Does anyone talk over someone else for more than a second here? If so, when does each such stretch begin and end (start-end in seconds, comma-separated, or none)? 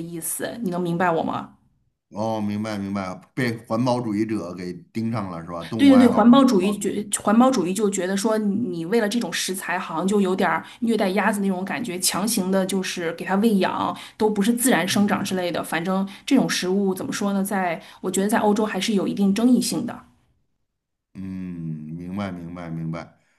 5.8-7.0